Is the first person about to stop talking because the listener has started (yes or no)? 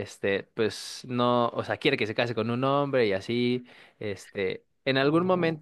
no